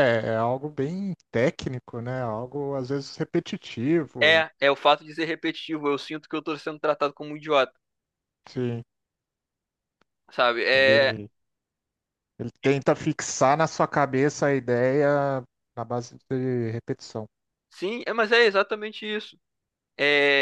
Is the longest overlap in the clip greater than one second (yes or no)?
no